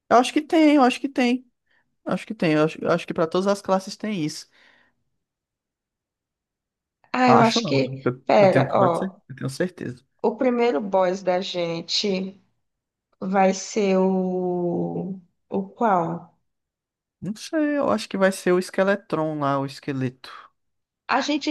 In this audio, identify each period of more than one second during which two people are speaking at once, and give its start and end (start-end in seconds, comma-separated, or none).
7.3-9.2